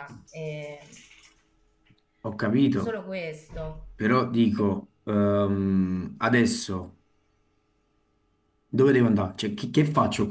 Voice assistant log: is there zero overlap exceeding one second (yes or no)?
yes